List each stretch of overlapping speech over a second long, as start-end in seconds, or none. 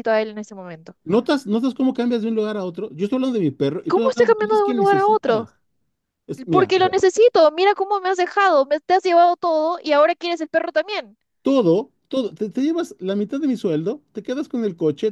3.9-5.5